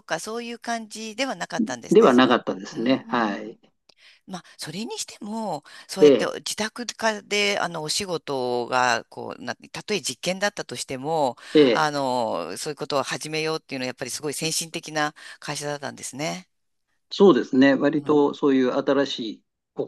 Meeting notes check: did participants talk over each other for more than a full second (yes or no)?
yes